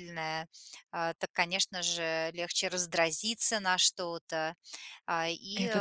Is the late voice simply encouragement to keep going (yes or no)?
yes